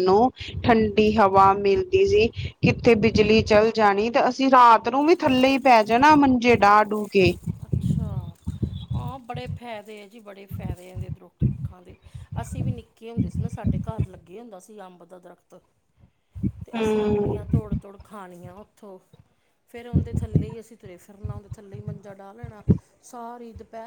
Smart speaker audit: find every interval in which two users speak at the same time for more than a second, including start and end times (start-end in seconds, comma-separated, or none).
none